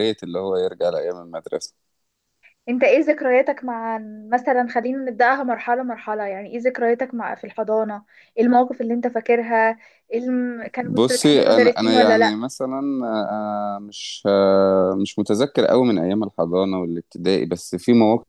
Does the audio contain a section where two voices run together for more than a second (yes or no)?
yes